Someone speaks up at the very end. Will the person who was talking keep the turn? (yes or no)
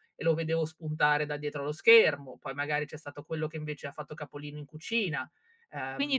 no